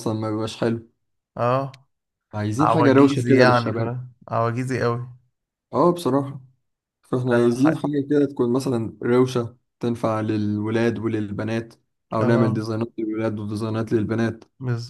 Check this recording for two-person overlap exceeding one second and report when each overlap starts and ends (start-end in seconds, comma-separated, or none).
2.6-3.9